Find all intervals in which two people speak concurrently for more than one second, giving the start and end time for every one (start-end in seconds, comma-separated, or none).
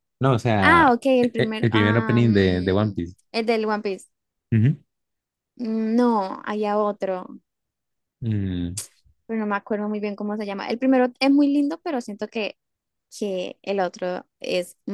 0.6-3.1